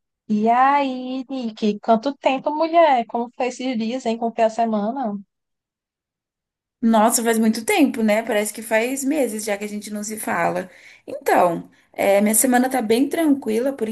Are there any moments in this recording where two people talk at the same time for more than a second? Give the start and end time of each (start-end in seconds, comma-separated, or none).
none